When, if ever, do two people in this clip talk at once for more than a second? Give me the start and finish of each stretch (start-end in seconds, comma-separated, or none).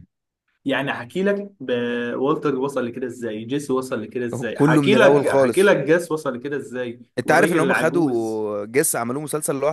4.3-5.7, 7.2-8.4